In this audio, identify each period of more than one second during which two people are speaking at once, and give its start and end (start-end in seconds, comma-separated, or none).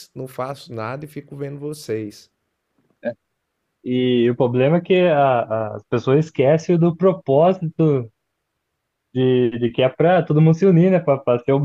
none